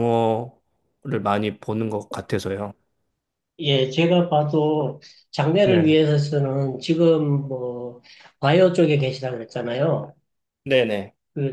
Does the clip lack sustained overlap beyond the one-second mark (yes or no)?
yes